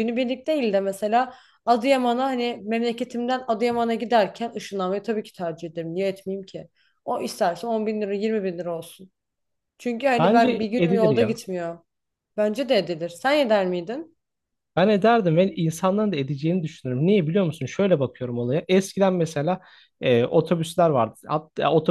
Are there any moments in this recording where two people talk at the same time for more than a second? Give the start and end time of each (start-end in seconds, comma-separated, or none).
10.2-11.4